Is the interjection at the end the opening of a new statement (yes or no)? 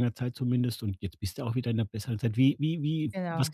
no